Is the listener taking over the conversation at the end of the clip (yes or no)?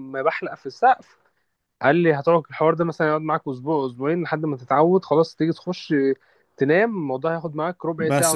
yes